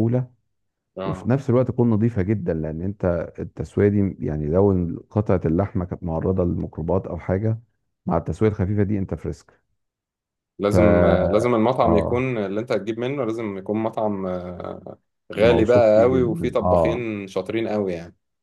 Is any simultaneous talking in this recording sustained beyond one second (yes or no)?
yes